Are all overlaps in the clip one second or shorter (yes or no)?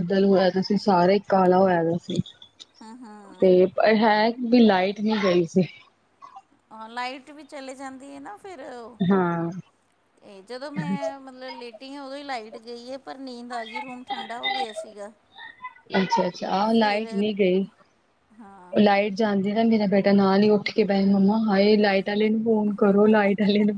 yes